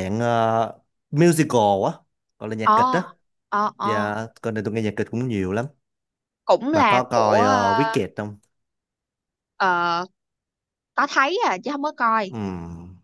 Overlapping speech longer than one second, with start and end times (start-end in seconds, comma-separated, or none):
6.7-8.0